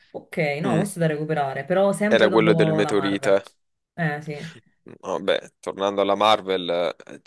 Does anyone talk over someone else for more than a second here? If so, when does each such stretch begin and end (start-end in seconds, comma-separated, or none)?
2.1-3.4